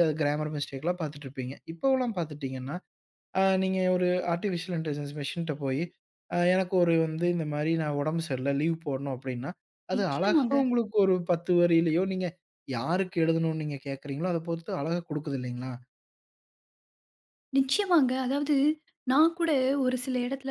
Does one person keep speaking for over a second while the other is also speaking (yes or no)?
no